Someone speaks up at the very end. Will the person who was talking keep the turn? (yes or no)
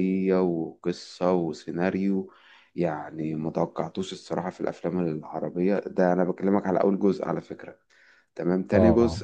yes